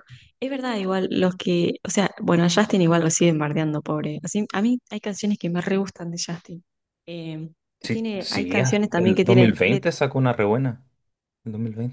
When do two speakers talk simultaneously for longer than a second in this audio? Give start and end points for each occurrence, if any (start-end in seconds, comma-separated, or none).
7.8-9.8